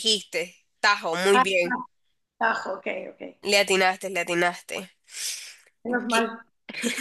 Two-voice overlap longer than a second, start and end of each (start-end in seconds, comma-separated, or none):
none